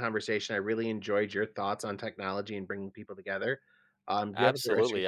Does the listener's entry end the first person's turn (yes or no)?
yes